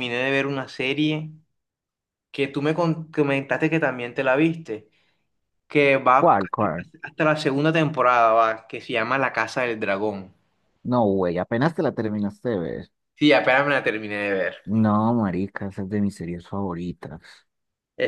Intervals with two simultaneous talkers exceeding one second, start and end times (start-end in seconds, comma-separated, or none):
none